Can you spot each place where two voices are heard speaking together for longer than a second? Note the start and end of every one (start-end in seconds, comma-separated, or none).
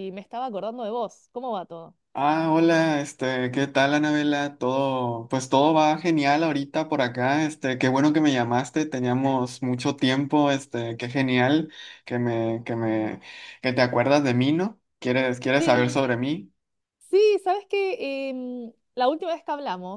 none